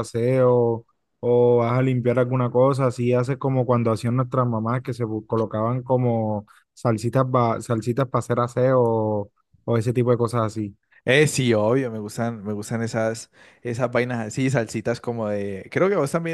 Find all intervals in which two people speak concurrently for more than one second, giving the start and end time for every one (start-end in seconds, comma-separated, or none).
none